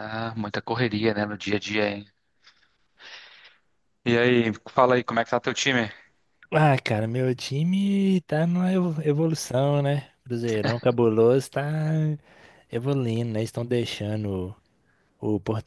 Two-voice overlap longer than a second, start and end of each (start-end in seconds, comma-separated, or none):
none